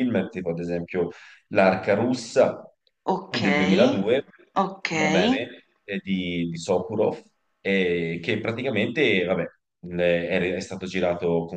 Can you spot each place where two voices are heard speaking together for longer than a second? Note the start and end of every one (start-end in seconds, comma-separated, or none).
none